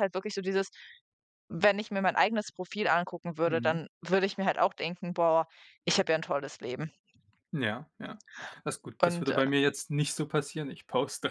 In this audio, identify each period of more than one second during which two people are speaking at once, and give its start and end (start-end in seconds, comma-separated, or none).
none